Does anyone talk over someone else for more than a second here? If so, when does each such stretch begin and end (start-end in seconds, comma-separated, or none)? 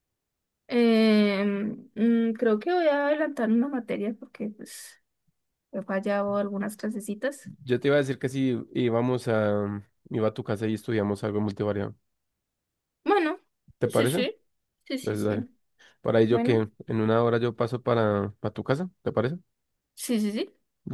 none